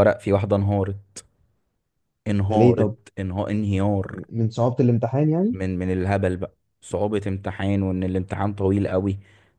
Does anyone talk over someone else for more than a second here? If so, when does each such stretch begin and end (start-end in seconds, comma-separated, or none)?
none